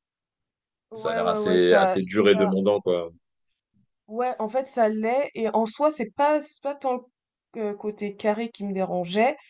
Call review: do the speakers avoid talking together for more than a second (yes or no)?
no